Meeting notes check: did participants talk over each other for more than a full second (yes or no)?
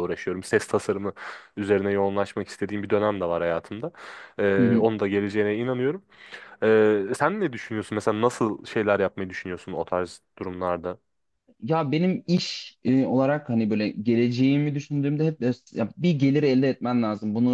no